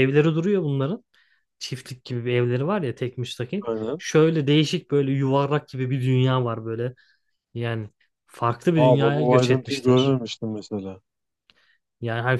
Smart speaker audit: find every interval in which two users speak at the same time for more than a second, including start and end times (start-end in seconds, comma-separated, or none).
8.8-10.1